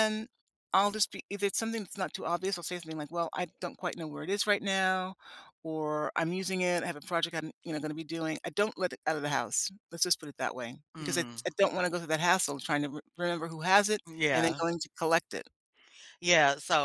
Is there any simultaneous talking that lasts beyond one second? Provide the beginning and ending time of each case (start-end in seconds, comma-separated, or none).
none